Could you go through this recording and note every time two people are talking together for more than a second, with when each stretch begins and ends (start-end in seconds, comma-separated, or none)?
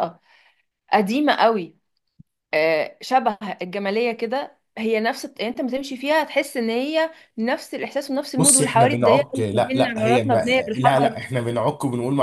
8.4-11.2